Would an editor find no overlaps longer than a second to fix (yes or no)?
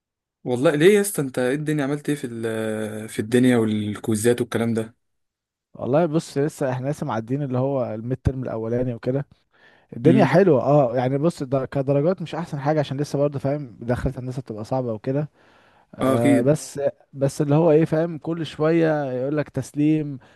yes